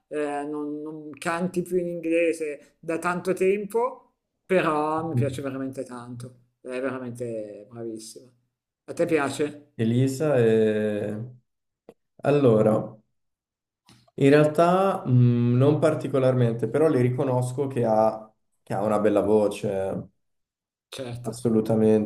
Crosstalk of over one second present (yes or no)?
no